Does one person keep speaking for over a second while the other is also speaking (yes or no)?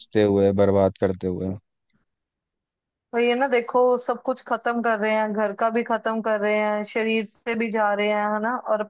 no